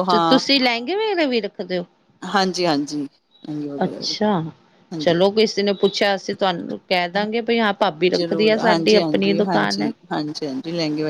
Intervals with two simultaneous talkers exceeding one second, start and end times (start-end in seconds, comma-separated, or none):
8.2-9.9